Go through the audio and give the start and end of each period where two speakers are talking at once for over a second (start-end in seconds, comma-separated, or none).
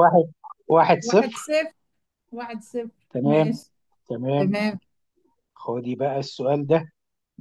none